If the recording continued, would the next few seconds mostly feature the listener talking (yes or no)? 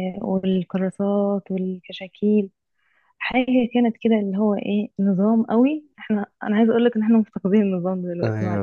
yes